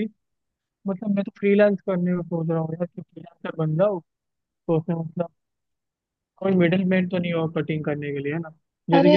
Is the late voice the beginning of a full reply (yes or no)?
yes